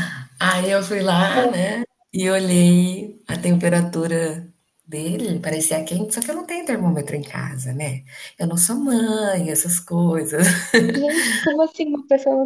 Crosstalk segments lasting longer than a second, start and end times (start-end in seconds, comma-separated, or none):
none